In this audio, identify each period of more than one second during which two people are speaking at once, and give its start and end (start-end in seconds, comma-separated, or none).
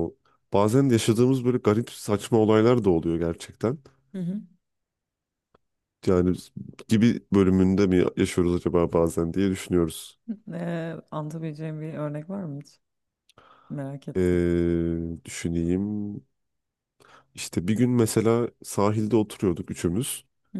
none